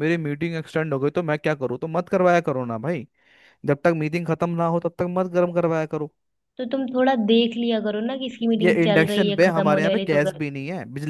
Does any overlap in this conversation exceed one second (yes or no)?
yes